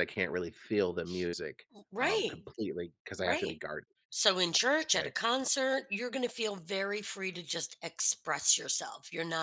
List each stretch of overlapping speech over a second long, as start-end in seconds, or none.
none